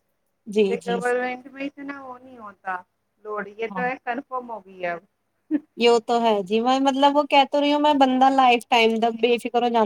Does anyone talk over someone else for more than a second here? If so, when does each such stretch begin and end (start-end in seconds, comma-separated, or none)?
none